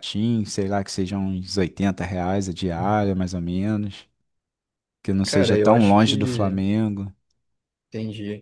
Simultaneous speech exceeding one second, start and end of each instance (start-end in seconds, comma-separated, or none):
5.2-6.6